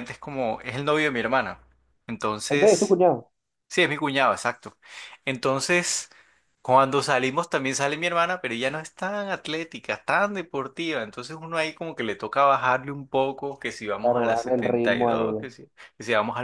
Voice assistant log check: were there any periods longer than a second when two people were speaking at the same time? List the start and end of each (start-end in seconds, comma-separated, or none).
14.0-15.5